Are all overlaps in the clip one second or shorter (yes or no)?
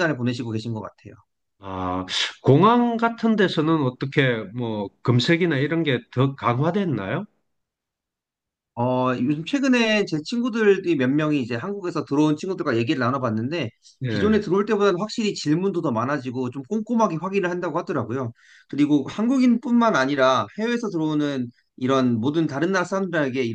yes